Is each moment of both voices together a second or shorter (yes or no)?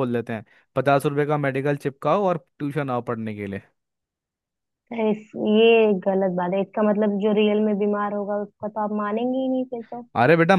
yes